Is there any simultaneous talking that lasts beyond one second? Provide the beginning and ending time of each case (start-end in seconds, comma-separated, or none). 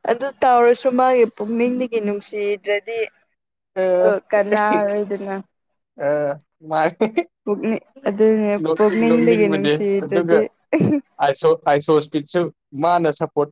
8.7-10.4